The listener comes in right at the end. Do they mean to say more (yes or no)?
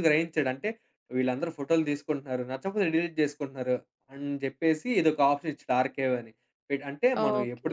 no